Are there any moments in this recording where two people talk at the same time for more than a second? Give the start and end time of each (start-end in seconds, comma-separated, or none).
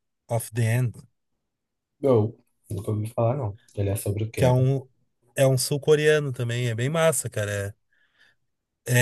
none